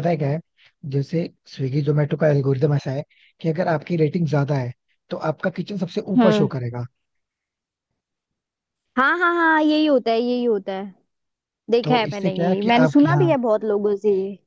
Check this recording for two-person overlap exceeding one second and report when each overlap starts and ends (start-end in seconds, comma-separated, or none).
11.8-13.3